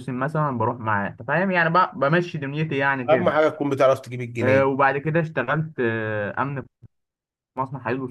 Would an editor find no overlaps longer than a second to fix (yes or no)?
yes